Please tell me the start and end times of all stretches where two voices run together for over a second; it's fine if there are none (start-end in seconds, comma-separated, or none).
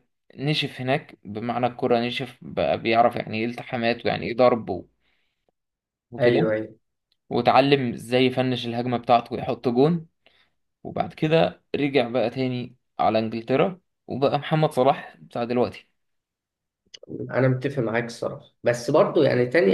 none